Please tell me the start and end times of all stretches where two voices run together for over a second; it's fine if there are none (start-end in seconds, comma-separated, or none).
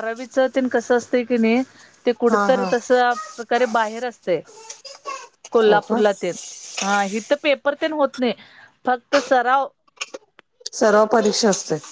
none